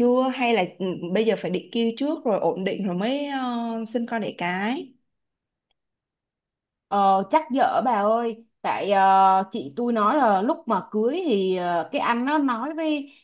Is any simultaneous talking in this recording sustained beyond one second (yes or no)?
no